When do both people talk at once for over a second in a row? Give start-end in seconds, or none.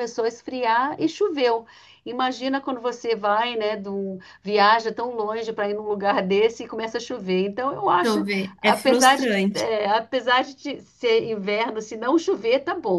8.0-9.7